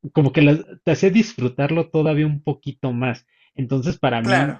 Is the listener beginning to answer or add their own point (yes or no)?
no